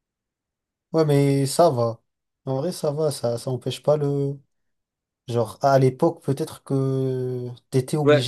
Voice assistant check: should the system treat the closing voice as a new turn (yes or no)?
yes